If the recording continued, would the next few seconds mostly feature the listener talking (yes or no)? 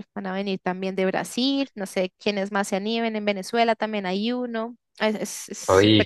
yes